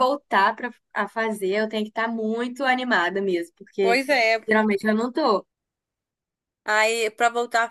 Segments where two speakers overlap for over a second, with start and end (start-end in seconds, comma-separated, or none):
none